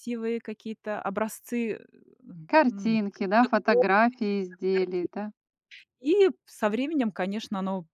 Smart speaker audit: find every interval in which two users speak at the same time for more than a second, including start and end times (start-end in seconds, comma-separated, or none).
2.7-5.1